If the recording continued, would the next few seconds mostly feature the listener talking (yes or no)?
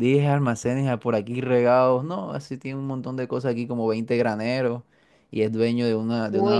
no